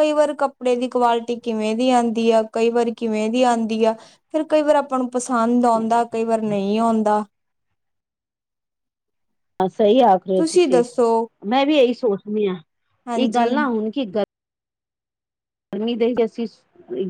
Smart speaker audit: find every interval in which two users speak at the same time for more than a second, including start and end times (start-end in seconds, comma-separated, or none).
none